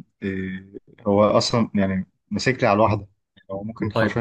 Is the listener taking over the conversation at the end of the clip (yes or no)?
yes